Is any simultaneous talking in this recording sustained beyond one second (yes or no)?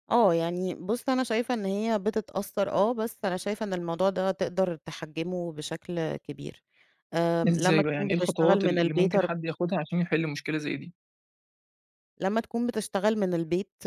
yes